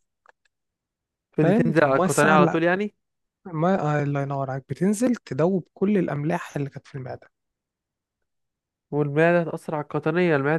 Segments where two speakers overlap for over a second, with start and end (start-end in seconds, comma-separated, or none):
1.4-2.6